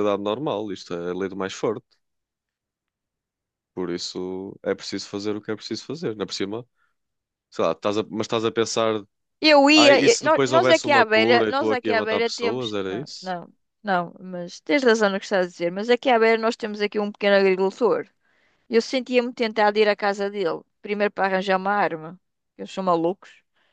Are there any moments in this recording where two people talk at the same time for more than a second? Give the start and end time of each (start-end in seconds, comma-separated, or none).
9.8-13.3